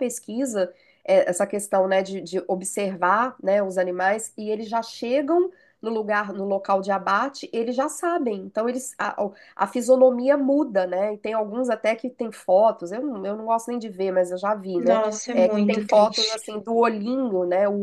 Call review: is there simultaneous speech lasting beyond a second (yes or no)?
yes